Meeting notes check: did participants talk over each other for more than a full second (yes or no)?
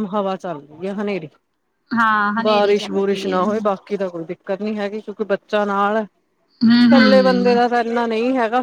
yes